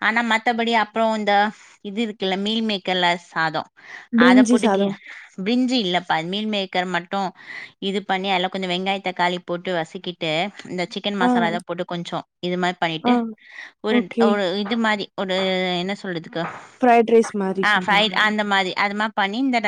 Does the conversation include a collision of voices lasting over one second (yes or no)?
no